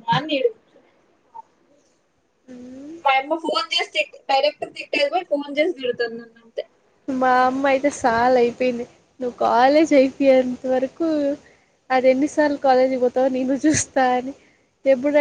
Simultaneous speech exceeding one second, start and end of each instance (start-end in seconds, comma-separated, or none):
none